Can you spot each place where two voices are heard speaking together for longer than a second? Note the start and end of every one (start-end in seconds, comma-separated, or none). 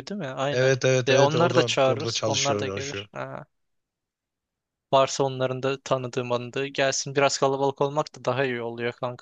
0.5-3.1